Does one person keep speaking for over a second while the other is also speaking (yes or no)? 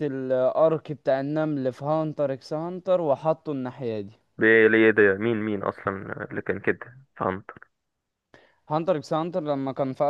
no